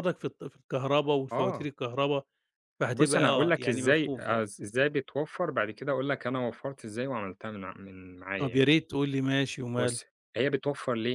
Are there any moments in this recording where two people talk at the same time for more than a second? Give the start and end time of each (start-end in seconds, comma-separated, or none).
2.9-4.4